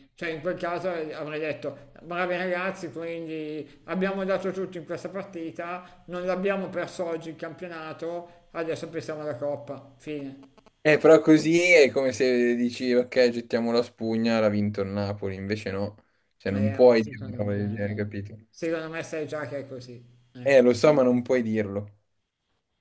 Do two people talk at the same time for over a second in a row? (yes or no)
yes